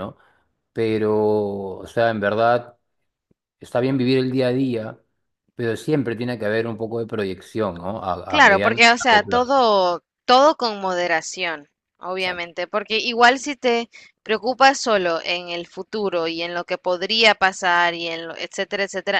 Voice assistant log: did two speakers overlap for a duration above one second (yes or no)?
yes